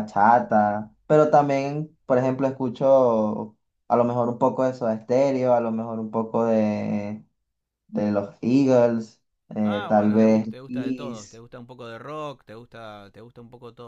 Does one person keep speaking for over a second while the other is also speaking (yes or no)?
yes